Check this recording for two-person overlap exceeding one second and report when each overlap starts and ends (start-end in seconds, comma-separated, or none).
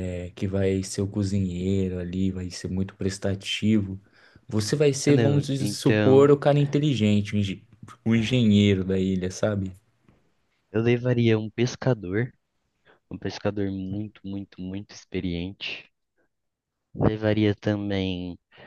5.0-6.3